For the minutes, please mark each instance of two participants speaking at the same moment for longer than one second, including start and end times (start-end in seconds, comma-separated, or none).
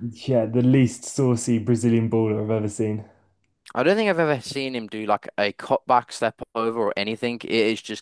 none